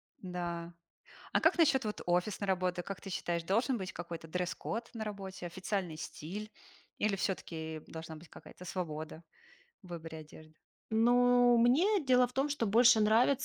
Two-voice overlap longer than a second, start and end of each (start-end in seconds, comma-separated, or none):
none